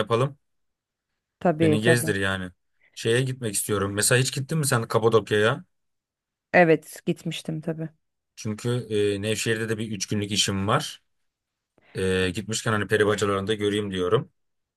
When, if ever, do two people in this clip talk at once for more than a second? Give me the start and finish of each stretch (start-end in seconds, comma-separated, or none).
none